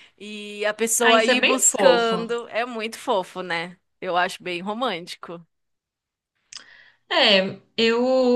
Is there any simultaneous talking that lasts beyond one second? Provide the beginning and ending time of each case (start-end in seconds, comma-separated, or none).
1.0-2.3